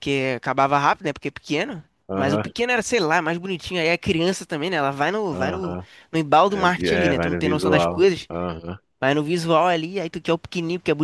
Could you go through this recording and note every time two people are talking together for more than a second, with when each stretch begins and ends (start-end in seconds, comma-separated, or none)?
6.5-8.3